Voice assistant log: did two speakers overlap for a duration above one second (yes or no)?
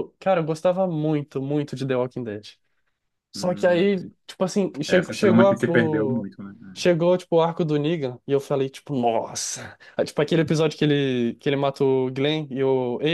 yes